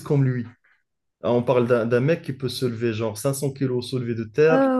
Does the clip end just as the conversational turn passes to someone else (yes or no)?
yes